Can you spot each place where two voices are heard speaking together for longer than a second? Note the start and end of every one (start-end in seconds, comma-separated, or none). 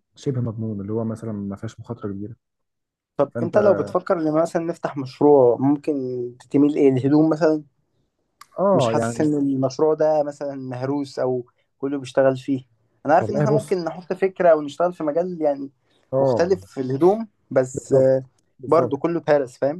none